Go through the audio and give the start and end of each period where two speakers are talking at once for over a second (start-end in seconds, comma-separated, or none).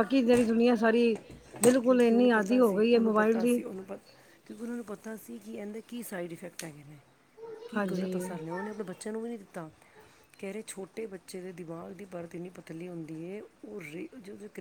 1.9-3.6